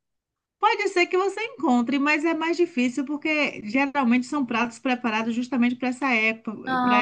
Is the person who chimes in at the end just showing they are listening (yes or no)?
yes